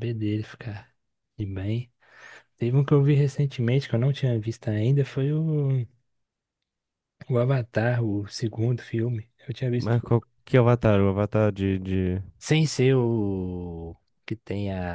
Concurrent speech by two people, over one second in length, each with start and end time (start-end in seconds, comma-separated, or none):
none